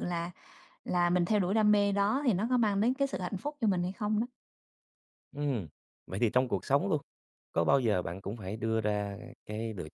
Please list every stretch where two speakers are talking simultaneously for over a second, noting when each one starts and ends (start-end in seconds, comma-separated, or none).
none